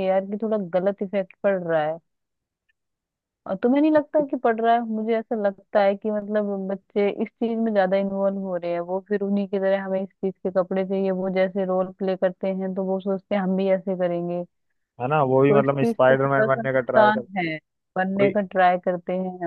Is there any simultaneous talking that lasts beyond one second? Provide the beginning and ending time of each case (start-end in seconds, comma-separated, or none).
15.5-17.2